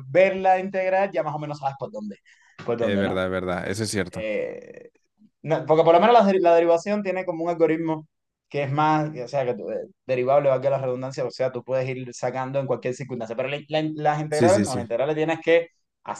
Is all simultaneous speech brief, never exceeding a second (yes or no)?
yes